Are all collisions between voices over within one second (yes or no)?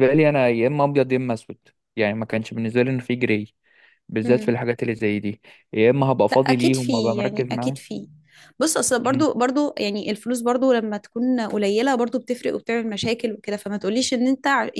no